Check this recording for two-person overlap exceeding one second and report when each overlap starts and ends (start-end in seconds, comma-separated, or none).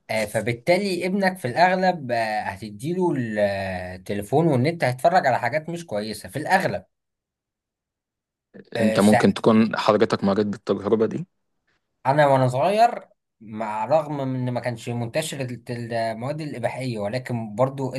none